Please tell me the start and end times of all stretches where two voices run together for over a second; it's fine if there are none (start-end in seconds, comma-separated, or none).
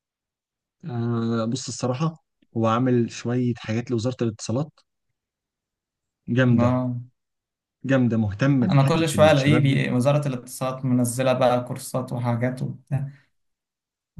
8.6-9.8